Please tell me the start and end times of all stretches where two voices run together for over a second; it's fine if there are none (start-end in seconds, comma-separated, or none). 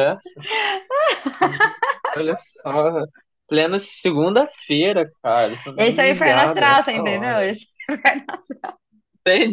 5.8-7.5